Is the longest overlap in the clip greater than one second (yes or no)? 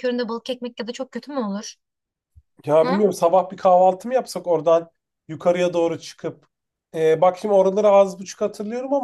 no